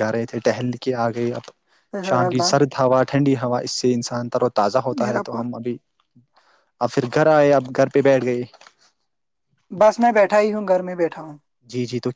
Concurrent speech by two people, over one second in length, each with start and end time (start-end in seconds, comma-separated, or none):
none